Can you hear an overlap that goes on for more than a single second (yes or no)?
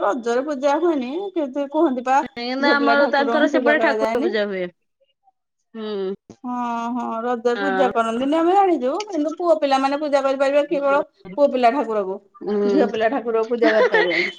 yes